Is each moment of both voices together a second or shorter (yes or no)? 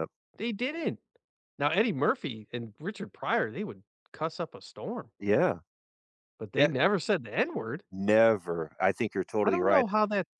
yes